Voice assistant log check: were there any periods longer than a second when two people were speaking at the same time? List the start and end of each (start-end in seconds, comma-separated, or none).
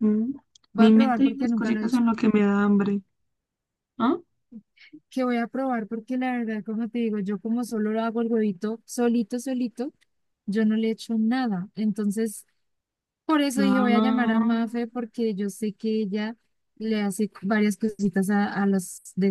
0.8-2.0, 13.5-14.8